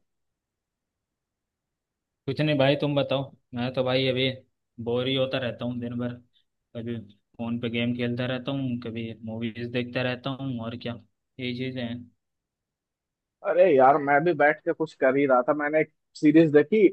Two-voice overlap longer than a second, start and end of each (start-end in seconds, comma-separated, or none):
none